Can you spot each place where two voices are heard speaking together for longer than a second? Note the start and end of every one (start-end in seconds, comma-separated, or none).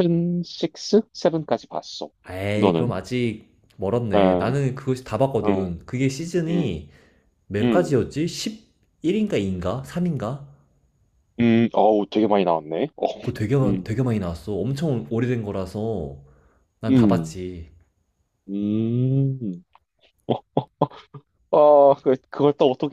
none